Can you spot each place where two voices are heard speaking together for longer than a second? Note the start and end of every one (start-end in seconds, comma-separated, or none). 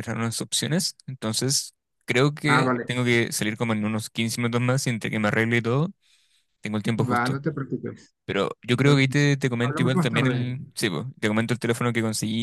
8.8-10.6